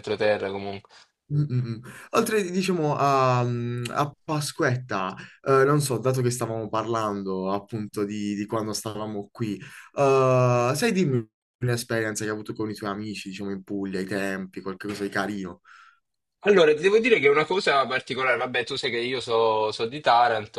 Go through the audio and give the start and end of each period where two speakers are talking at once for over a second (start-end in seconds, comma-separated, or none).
none